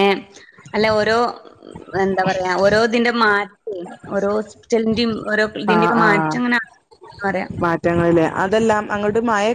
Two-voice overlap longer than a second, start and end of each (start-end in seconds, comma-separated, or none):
none